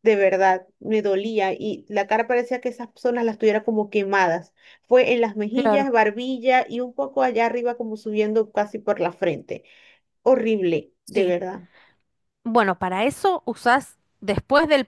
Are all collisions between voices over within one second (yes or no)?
yes